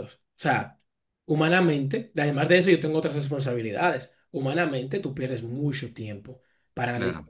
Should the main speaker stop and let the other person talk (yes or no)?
no